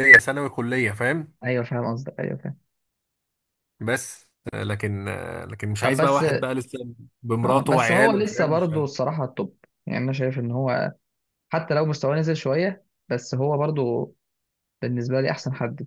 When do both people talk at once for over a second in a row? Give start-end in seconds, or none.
7.4-8.9